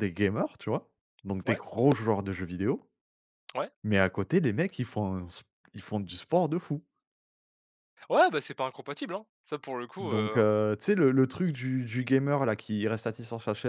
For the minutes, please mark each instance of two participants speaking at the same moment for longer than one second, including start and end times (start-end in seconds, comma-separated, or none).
none